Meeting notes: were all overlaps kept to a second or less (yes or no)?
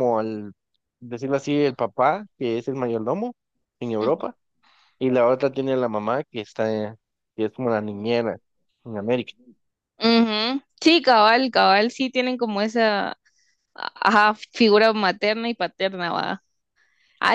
yes